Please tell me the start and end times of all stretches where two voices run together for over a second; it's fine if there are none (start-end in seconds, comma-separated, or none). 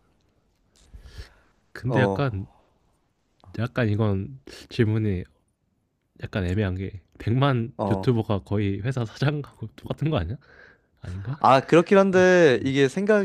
none